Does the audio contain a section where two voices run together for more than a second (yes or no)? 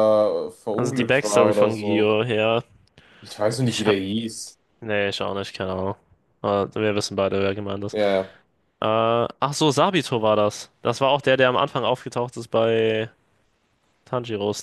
yes